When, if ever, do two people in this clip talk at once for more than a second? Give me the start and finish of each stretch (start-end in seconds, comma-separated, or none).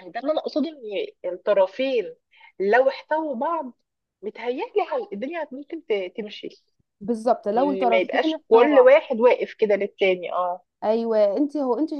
7.6-8.9